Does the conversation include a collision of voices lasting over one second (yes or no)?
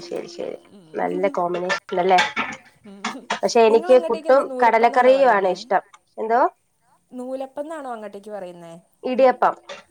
yes